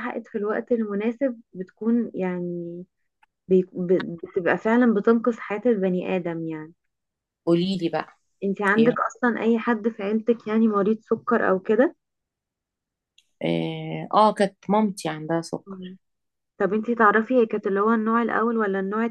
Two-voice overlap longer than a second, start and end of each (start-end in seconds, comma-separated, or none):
none